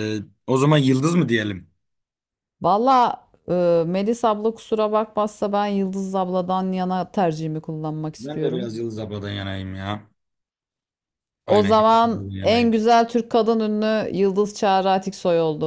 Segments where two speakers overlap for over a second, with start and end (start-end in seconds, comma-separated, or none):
11.5-12.8